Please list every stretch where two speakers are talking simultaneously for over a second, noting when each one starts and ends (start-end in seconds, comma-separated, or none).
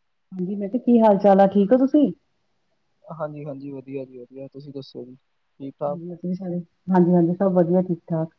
none